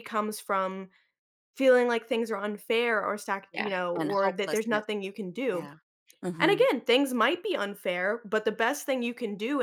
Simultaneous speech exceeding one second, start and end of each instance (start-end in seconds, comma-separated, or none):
3.5-4.8